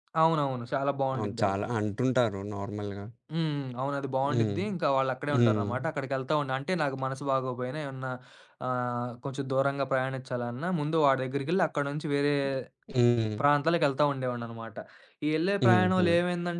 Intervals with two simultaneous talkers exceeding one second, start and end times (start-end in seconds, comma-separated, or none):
none